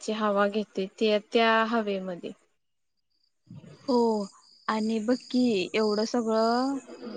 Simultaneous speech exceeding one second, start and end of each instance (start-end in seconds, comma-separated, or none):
none